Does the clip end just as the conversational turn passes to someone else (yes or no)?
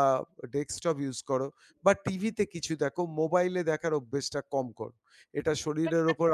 no